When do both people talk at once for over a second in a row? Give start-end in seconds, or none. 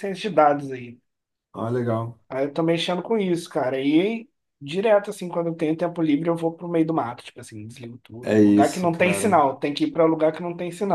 8.2-9.4